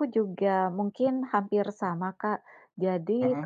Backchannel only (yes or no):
yes